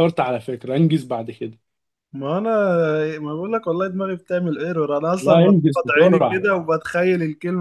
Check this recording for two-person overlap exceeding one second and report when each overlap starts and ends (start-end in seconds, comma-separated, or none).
5.2-6.4